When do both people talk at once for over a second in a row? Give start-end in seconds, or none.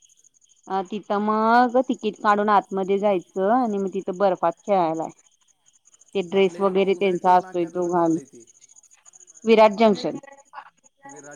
6.4-8.1